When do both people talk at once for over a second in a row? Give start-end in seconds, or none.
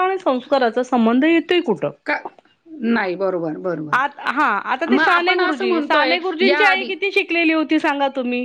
4.9-6.9